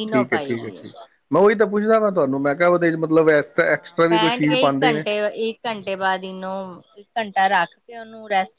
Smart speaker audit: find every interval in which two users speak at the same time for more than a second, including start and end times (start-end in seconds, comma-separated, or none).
3.6-5.1